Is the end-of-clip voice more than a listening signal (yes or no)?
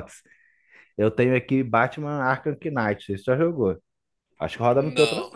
yes